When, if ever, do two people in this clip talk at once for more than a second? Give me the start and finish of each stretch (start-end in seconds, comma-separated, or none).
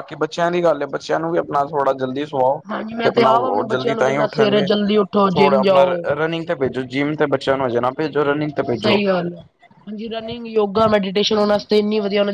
3.0-4.7